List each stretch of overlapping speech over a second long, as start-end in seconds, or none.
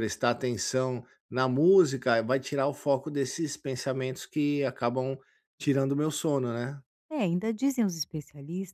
none